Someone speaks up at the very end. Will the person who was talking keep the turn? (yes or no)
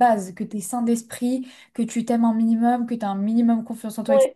yes